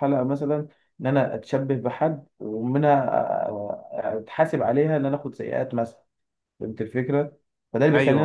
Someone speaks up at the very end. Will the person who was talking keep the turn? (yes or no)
yes